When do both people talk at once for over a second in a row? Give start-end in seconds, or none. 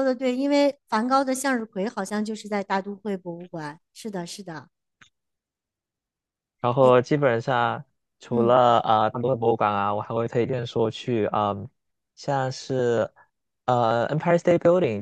none